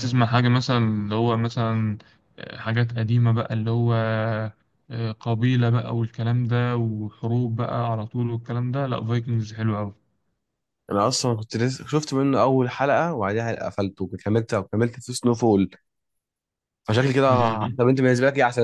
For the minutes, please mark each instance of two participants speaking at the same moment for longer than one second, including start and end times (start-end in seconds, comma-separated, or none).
none